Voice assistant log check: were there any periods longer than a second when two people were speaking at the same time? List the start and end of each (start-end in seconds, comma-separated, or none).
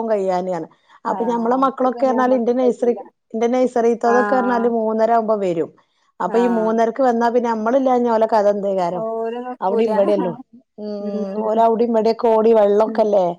1.2-3.0